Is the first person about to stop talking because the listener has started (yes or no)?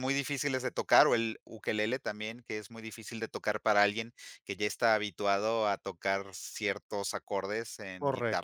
yes